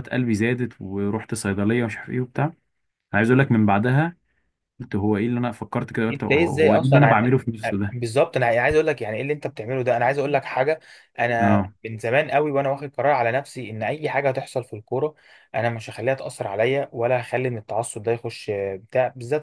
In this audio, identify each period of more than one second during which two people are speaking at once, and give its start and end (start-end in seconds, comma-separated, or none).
6.1-7.3